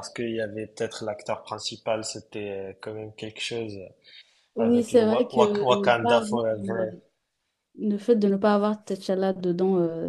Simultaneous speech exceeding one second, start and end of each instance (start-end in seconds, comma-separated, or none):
4.6-6.9